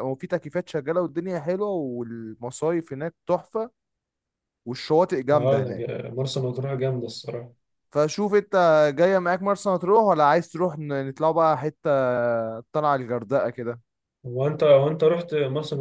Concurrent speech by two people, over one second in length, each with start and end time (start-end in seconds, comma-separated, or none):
none